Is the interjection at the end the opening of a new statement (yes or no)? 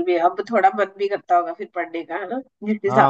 yes